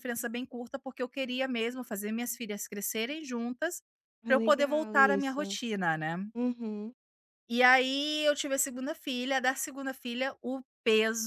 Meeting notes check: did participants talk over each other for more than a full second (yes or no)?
yes